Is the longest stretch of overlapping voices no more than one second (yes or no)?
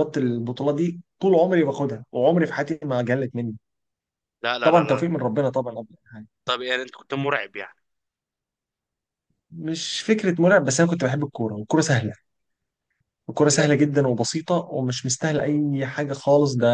yes